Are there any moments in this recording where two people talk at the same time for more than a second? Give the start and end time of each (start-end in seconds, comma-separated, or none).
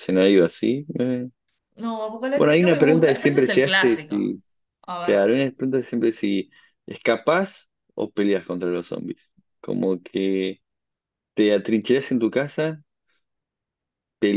2.4-4.3